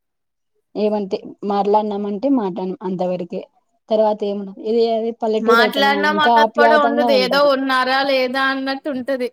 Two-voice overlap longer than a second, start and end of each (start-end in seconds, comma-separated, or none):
none